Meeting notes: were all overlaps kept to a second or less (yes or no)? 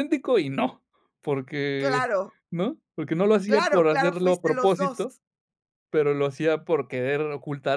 no